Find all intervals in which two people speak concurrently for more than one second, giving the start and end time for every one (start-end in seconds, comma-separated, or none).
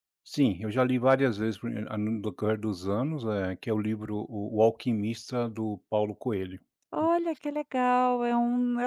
none